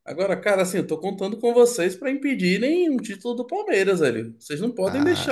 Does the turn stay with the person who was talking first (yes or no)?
yes